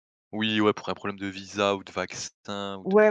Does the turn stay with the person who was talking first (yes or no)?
no